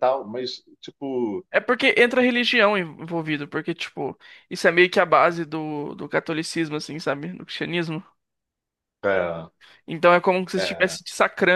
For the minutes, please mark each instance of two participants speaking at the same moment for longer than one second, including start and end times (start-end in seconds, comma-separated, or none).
none